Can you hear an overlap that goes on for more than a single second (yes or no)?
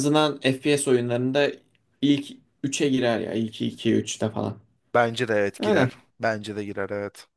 no